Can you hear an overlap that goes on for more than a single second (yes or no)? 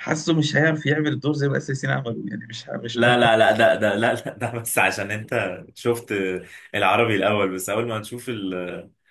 no